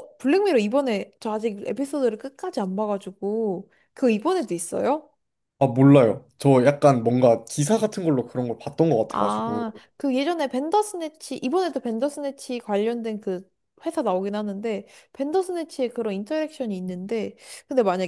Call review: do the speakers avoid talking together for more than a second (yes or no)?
yes